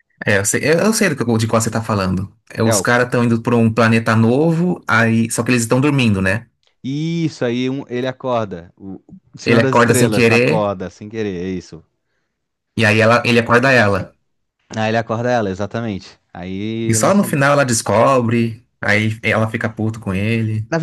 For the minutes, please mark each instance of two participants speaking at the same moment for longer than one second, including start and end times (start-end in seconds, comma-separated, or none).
9.4-10.7